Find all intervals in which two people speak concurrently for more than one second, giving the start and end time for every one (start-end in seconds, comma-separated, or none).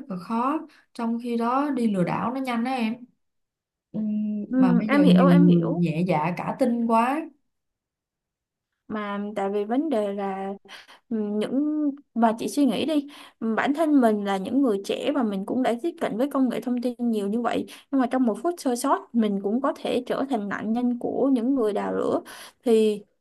4.5-5.8